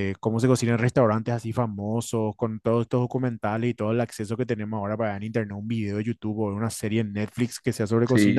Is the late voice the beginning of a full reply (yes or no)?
no